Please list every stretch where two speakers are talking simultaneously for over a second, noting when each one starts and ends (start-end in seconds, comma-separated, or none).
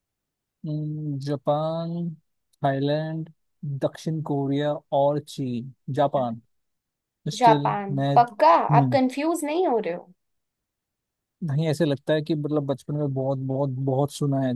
7.4-9.0